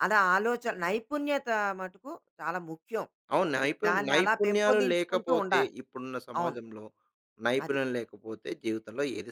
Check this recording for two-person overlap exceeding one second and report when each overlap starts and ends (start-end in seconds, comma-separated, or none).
3.6-5.7